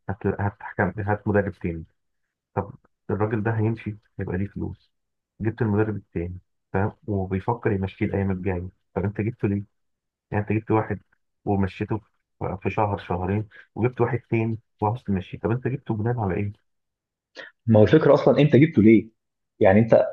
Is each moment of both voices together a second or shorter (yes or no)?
yes